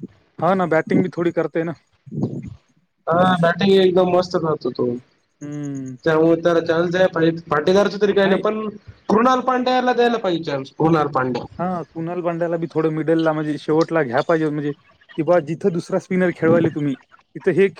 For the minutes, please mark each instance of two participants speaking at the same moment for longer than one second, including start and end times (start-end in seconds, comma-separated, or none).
none